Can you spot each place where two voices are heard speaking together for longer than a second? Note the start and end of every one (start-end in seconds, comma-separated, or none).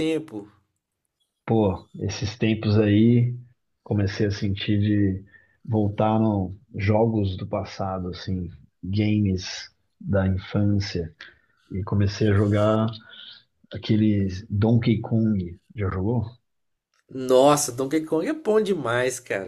none